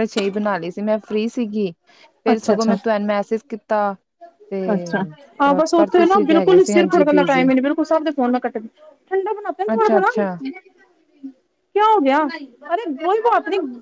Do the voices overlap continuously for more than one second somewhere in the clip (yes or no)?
yes